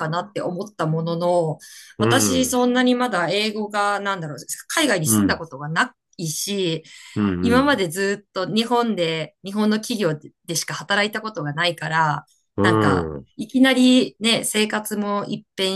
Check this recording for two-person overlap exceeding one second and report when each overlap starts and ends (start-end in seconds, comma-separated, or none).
none